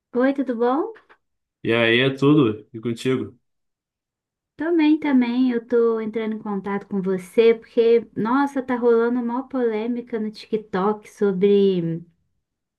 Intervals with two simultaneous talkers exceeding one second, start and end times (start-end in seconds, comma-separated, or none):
none